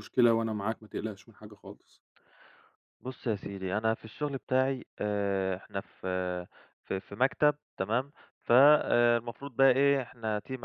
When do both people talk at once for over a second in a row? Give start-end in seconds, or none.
none